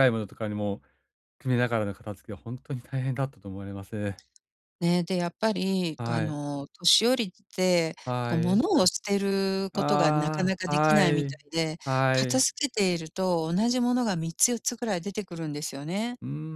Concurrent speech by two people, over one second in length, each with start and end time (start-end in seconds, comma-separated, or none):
9.7-11.4